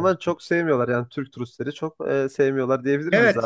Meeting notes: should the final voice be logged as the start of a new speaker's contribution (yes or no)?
yes